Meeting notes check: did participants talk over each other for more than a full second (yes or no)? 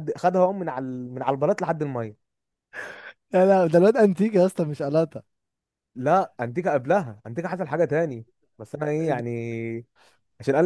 no